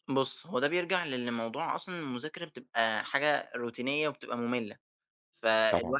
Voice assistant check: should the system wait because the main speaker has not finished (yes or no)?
yes